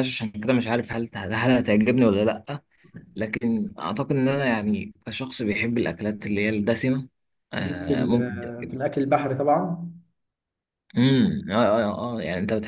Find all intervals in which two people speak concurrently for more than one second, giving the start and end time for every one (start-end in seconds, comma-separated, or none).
7.6-8.8